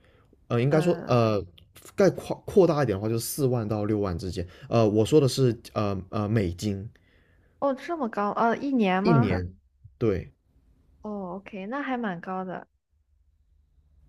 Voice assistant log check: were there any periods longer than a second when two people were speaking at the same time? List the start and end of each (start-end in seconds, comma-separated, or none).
none